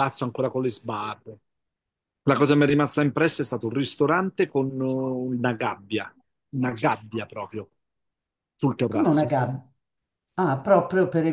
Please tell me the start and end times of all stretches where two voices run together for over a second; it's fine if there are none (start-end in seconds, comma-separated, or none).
none